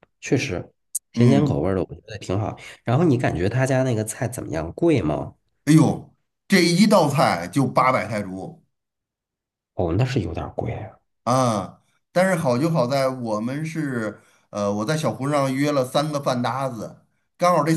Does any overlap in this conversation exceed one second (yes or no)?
no